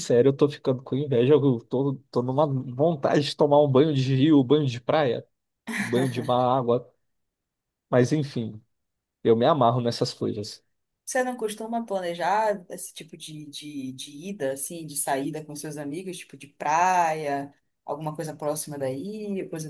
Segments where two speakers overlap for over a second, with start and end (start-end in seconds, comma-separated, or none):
none